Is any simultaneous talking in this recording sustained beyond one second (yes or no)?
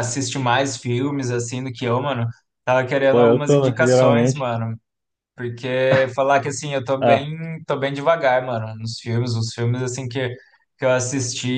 yes